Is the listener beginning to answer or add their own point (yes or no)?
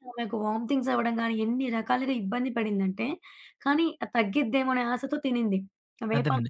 yes